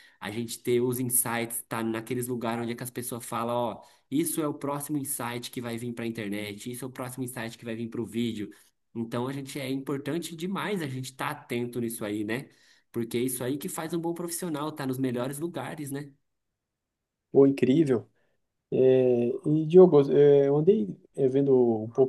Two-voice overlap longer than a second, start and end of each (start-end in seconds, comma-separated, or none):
none